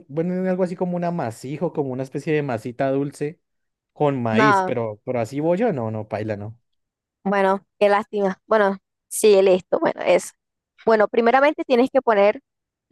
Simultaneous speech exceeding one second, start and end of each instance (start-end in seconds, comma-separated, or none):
none